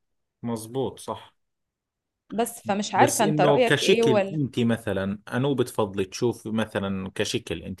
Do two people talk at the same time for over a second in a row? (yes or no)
yes